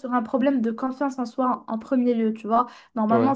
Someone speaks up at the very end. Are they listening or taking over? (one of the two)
listening